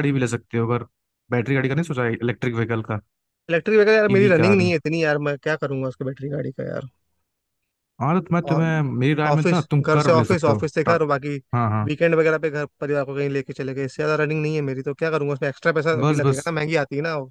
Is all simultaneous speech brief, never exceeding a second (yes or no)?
no